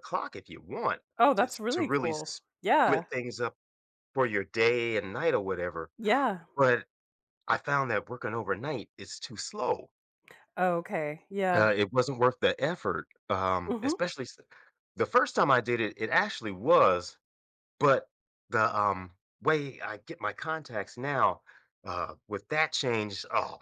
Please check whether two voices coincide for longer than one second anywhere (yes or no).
yes